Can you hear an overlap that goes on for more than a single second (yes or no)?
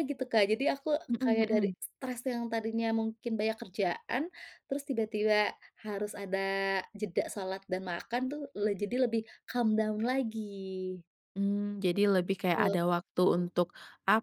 no